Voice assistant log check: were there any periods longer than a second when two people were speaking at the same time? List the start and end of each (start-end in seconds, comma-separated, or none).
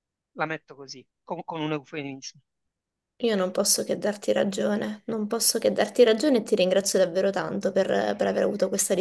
none